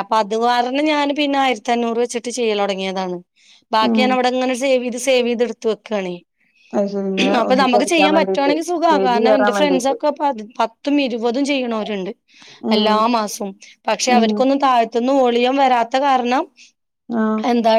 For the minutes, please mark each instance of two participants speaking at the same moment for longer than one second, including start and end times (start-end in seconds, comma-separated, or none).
7.4-10.0